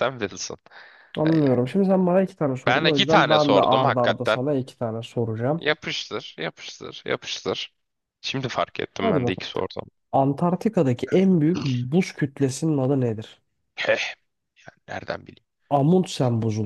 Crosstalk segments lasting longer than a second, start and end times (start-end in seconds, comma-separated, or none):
2.7-4.4